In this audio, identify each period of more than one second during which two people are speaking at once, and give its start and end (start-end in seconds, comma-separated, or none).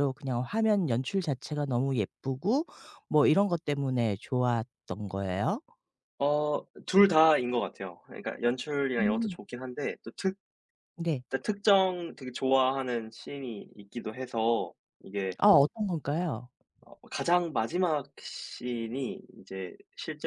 none